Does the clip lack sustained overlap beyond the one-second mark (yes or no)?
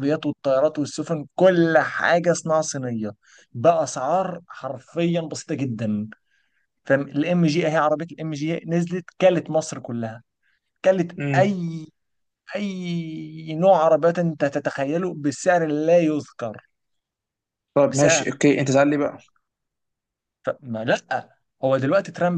yes